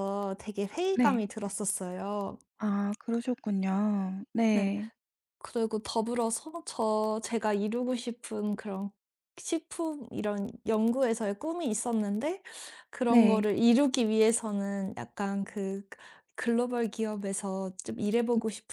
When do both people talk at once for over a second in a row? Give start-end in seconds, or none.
none